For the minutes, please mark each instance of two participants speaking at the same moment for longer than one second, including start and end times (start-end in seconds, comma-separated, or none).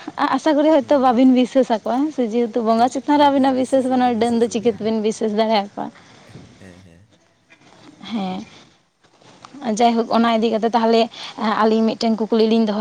2.8-4.9